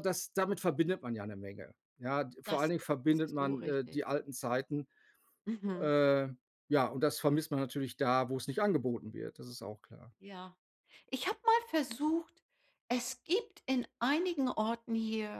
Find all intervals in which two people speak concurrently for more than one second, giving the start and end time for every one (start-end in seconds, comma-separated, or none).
2.5-4.0